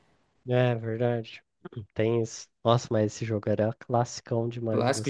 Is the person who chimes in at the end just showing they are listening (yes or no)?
no